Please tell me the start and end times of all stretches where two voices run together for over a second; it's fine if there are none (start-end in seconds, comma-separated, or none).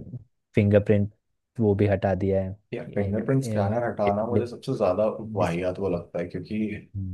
2.7-4.4